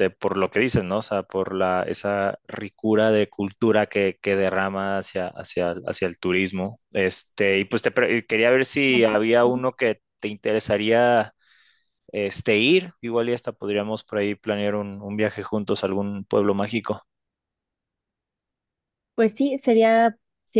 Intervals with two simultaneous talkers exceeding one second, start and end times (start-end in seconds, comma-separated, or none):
none